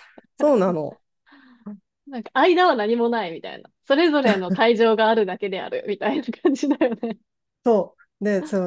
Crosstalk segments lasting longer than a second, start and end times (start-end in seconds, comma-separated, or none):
none